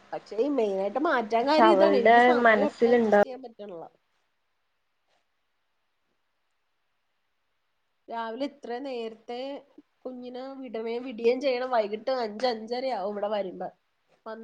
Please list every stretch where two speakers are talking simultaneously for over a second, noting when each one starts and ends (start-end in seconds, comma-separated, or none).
1.4-3.1